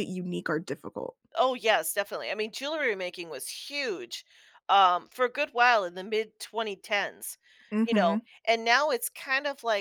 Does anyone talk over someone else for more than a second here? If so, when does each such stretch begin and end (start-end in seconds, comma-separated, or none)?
none